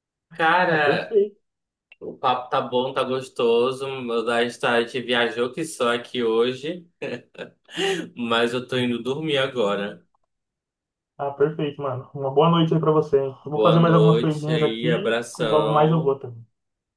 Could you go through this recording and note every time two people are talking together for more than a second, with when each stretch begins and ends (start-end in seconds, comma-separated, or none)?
13.5-16.1